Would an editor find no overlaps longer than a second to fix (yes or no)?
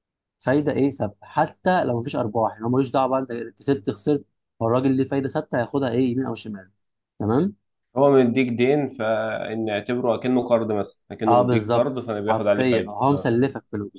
no